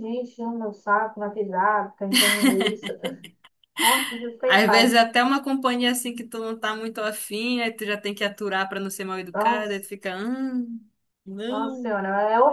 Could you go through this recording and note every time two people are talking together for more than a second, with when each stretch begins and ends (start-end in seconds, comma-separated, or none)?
none